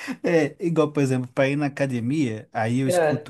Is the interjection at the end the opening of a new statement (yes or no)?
no